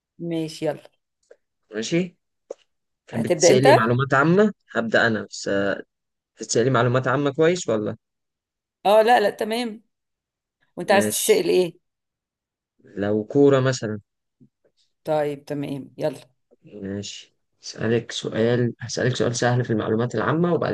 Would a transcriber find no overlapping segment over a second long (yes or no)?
yes